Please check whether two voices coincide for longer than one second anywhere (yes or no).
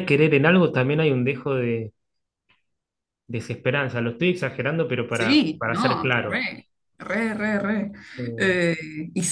yes